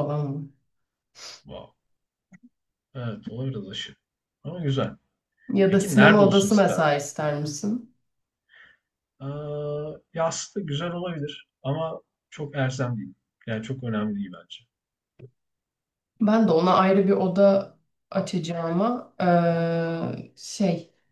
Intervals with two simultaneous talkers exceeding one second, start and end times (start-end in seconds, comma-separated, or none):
5.7-6.9